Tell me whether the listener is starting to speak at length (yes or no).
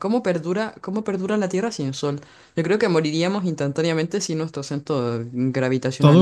yes